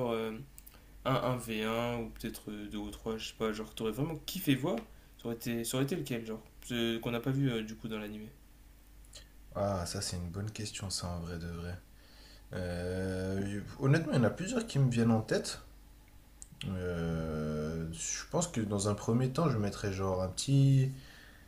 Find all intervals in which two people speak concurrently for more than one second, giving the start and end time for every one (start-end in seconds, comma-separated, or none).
none